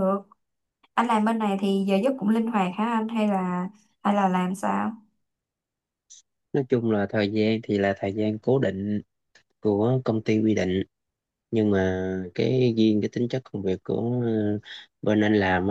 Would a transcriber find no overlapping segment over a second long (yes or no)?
yes